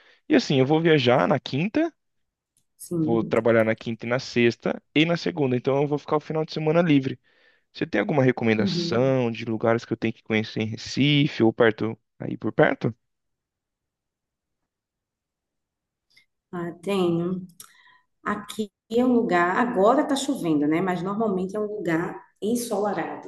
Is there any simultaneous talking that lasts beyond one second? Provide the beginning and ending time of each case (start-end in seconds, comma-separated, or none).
none